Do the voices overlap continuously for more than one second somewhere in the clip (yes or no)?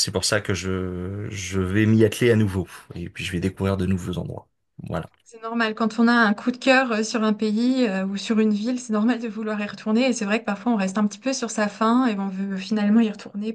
no